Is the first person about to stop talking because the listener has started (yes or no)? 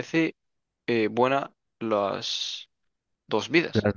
yes